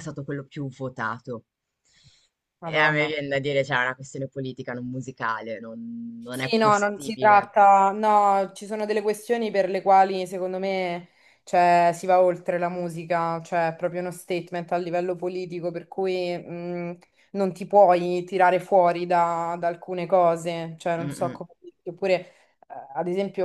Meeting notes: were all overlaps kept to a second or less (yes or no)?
no